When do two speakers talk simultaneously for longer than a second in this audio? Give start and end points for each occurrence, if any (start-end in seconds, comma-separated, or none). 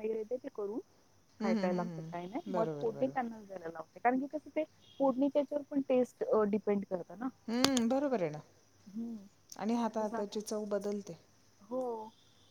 1.4-3.2